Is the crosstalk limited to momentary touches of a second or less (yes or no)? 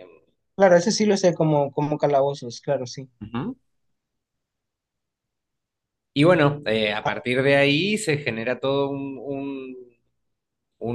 yes